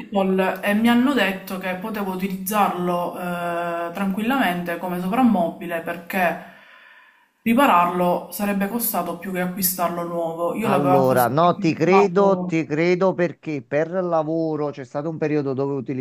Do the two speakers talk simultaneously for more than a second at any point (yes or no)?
yes